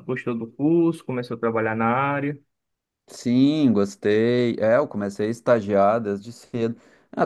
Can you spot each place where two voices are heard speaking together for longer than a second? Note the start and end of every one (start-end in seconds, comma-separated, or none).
none